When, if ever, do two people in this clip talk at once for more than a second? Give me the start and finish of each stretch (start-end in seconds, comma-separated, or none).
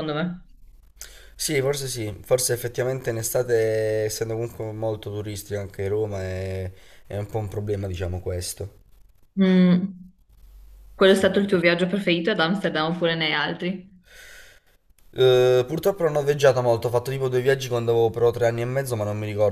none